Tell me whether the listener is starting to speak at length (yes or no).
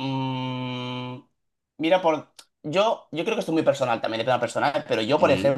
no